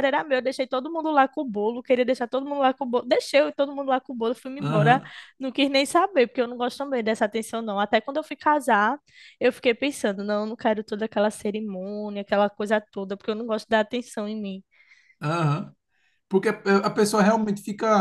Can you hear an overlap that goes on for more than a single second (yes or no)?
no